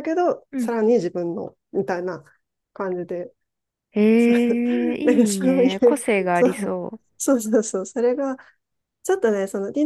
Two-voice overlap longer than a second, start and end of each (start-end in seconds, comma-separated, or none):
5.0-6.7